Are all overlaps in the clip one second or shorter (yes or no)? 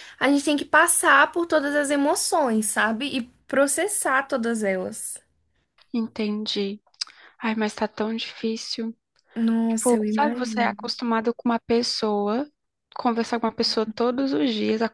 no